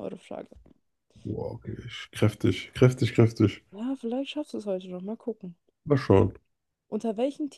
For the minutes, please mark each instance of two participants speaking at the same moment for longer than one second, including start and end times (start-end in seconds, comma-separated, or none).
none